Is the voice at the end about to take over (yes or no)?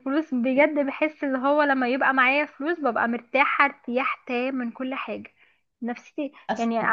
no